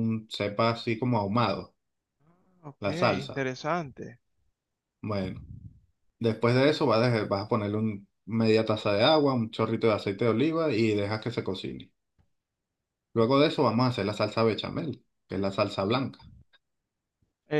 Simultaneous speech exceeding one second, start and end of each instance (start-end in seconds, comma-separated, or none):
none